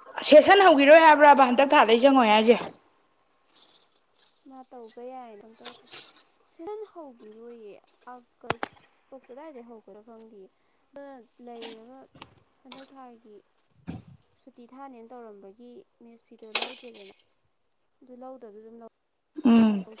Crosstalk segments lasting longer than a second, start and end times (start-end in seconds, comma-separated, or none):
none